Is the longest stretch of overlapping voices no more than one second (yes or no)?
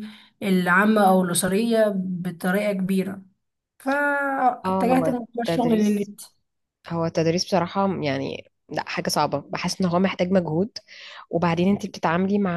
no